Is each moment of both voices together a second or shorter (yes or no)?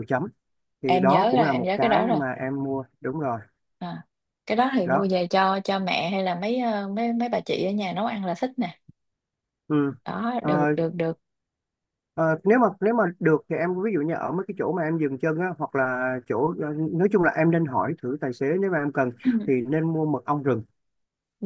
no